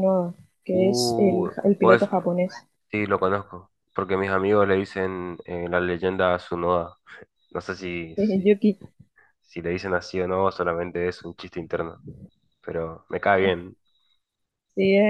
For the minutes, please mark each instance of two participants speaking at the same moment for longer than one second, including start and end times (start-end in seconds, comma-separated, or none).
0.7-2.1